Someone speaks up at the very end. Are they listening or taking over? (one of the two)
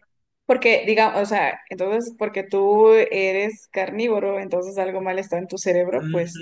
taking over